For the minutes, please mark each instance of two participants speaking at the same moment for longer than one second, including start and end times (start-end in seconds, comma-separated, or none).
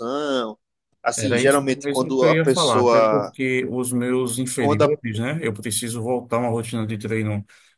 1.2-3.3